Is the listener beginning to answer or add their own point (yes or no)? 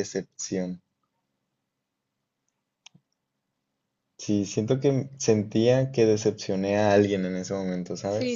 yes